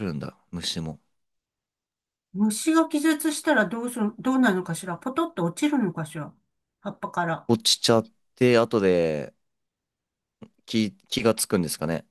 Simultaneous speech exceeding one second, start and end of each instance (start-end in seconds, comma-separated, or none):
none